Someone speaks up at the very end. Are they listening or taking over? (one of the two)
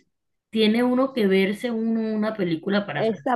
taking over